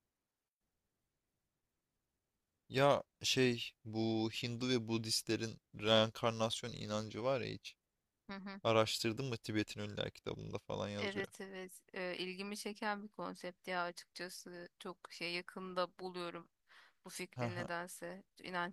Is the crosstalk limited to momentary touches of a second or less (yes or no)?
yes